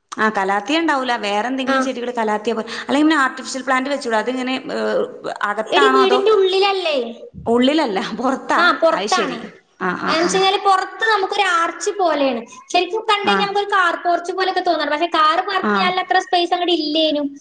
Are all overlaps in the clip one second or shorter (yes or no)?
yes